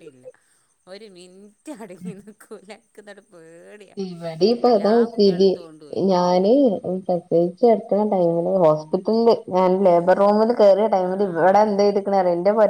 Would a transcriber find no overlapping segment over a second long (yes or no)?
yes